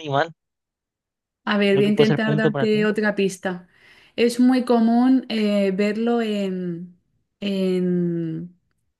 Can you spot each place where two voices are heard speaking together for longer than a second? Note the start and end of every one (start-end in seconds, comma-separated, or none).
1.7-2.9